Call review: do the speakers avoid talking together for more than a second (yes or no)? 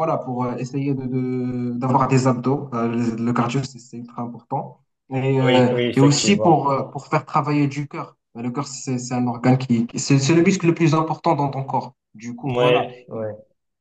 no